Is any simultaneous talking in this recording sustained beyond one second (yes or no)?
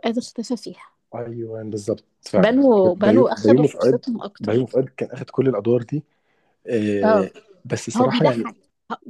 yes